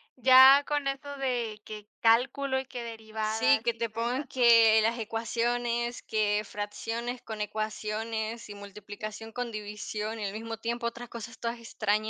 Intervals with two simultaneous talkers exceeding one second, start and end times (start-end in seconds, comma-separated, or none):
3.2-4.5